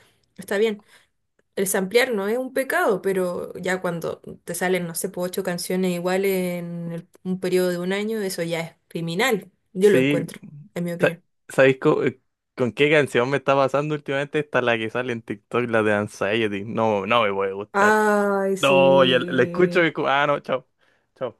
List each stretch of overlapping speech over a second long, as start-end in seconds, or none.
18.6-19.9